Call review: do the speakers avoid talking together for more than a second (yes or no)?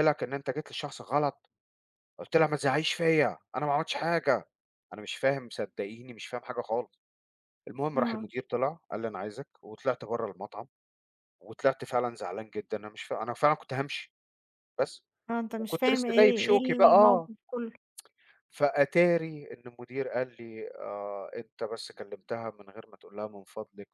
no